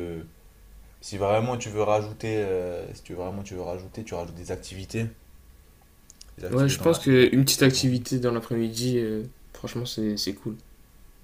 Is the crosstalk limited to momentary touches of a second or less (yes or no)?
no